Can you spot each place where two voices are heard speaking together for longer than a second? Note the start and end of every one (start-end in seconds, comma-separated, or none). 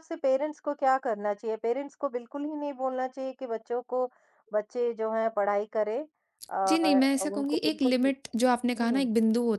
6.7-8.1